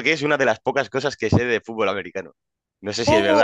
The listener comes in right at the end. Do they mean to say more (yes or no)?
yes